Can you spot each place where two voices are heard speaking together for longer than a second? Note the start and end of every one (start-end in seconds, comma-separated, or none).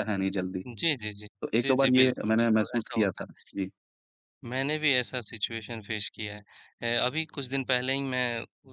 1.4-3.5